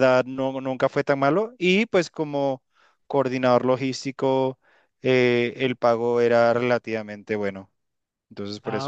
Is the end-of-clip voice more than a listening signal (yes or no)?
yes